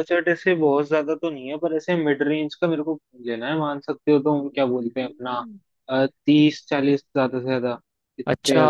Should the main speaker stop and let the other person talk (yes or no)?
yes